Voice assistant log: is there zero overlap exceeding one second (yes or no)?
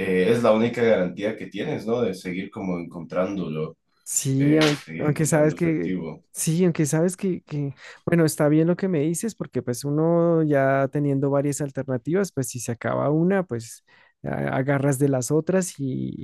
no